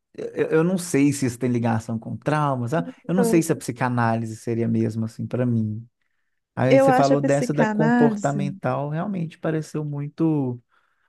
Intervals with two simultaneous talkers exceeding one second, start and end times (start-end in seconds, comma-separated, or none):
6.7-8.4